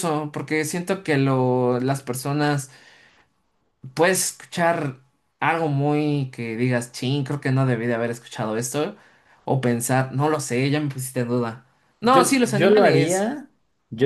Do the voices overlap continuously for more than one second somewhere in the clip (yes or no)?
yes